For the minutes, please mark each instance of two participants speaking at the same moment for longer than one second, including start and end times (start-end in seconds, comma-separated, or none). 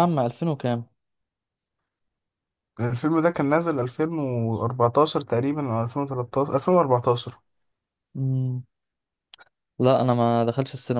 none